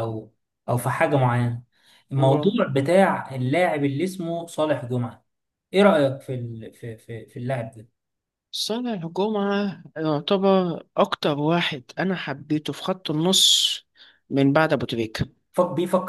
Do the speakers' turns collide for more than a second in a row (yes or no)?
no